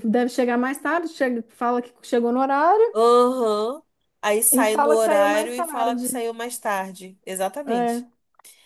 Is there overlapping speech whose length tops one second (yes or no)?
yes